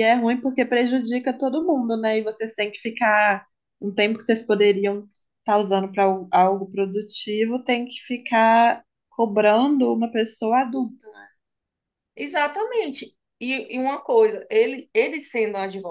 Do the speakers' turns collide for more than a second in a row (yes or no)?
no